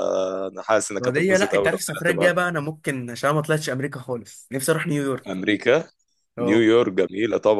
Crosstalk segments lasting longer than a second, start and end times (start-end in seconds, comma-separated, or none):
1.0-2.3